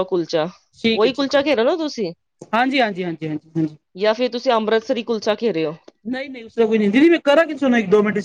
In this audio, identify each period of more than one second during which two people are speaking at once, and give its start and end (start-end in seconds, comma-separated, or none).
none